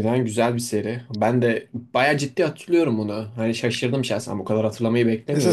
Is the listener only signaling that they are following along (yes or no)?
no